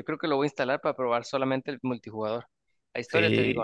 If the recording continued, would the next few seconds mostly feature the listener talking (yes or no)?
no